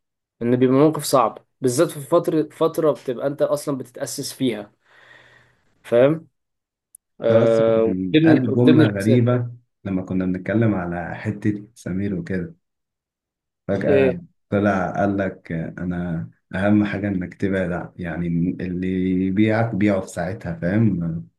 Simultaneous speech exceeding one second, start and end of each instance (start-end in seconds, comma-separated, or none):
7.3-9.2